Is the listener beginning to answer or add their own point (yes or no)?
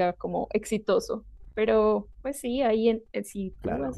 no